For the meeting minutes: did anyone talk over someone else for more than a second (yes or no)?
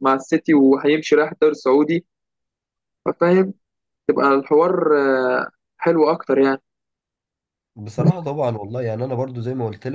no